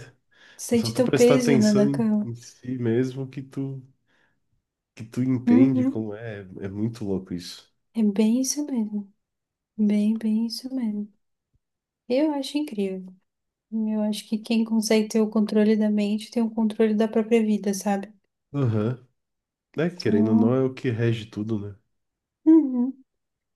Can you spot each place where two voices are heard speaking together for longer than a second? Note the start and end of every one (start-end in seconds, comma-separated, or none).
0.8-2.3